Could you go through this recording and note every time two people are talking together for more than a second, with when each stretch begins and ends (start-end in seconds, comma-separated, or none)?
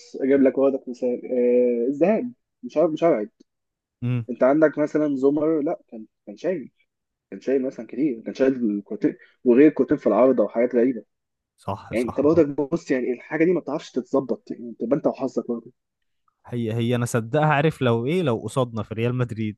none